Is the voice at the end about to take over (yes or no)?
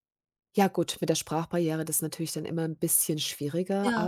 no